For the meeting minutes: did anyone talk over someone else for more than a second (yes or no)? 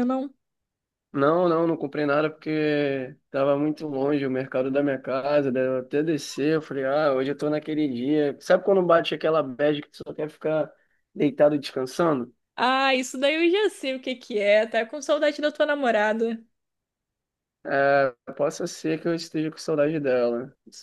no